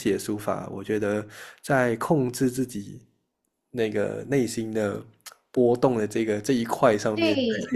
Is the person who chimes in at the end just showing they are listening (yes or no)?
no